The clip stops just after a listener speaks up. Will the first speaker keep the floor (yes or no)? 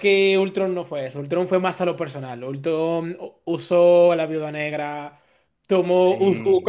yes